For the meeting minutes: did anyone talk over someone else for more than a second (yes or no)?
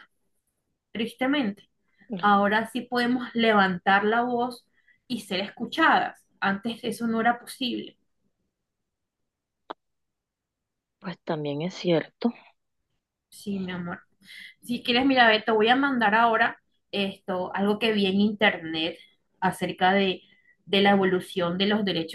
no